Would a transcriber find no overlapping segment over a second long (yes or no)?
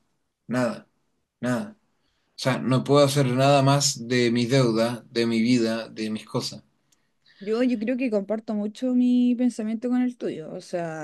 yes